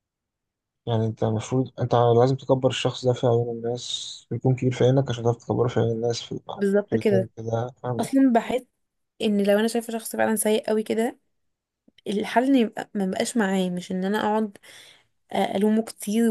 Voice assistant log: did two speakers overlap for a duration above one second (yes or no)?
no